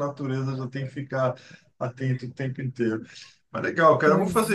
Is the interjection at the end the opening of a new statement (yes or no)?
no